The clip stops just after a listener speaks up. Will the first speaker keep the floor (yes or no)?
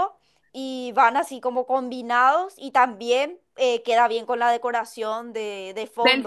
no